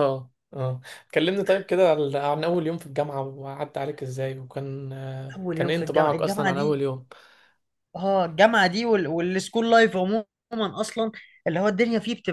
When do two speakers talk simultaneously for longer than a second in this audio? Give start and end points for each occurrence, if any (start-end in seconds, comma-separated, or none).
5.3-6.8